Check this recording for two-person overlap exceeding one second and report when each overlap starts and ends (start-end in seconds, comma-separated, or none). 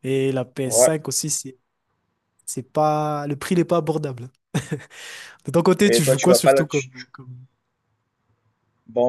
5.8-7.0